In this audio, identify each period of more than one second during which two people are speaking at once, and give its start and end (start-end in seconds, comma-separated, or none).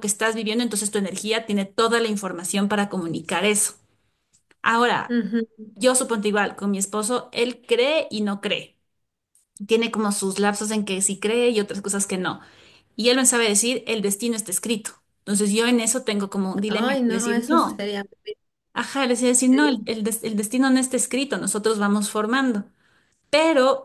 16.7-17.9